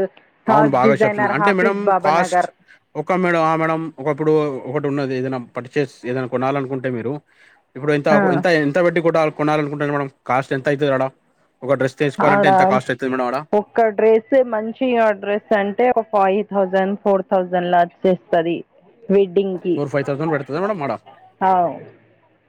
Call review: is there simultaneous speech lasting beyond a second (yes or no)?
yes